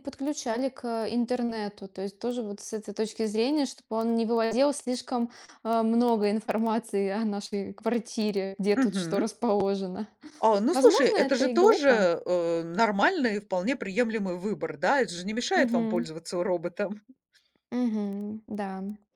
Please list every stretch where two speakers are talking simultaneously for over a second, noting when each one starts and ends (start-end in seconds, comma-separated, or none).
10.7-12.1